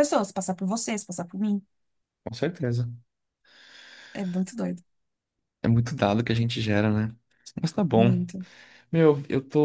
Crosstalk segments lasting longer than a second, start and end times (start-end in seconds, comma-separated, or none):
none